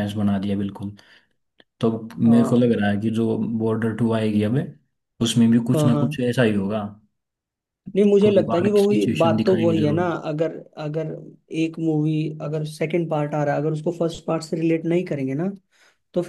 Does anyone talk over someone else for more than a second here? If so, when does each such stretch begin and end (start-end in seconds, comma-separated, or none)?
8.2-10.0